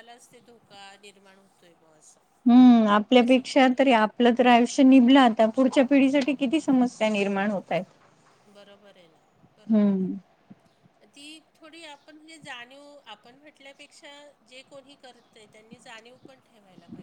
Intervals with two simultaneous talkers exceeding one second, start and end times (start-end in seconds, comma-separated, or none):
none